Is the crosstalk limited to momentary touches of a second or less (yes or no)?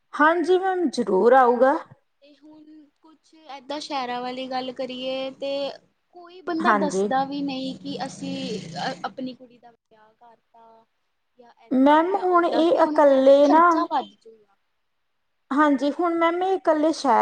no